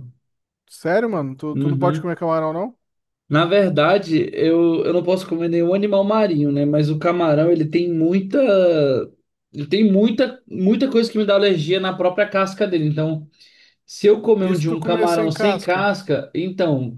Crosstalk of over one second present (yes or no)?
yes